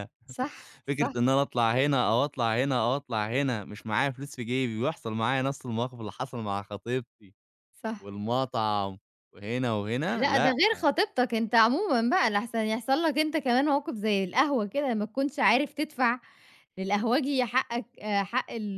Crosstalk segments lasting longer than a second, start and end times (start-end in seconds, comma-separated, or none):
none